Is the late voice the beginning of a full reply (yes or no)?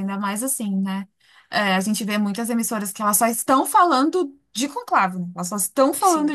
no